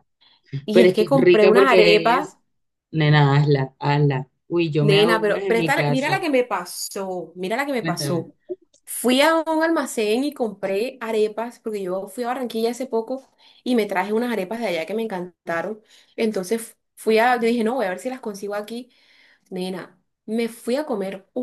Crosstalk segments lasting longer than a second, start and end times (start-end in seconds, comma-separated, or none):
0.7-2.4, 4.8-6.2